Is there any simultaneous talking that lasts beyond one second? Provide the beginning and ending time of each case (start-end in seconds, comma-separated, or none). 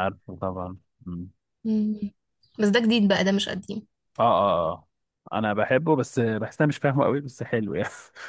none